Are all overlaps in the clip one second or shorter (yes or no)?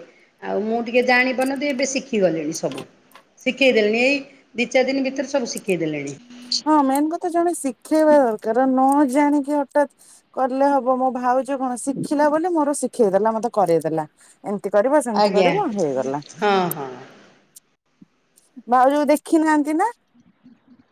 yes